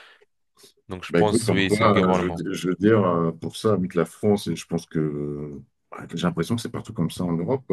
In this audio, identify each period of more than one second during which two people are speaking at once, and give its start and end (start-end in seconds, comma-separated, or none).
1.1-2.4